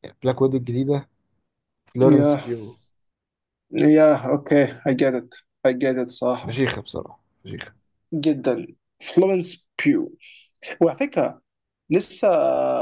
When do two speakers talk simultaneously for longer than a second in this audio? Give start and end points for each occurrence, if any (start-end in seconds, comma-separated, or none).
none